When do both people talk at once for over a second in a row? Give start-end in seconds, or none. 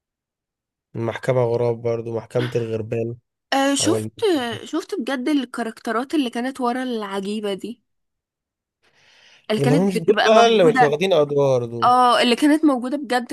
9.6-11.0